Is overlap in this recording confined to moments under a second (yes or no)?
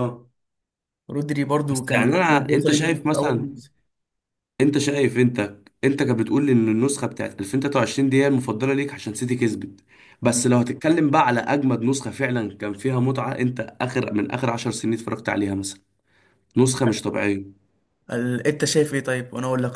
no